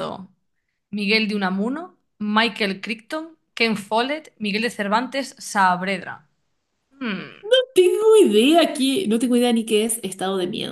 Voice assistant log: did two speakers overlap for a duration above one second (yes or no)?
no